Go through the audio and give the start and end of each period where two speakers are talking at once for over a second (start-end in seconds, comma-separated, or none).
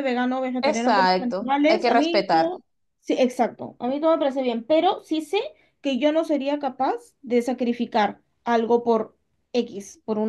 0.6-2.5